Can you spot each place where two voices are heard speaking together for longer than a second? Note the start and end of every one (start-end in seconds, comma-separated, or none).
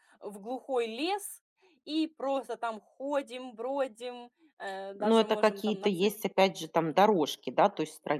5.0-6.2